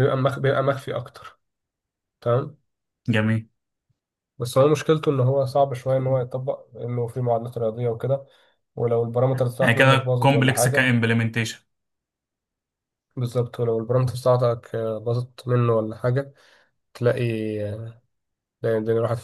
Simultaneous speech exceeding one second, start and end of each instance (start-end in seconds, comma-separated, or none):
9.6-10.9